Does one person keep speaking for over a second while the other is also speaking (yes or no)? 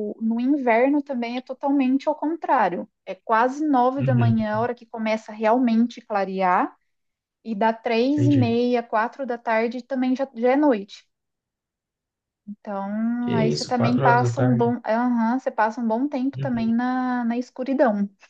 yes